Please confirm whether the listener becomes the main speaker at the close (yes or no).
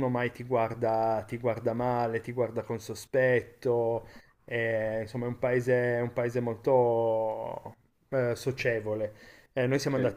no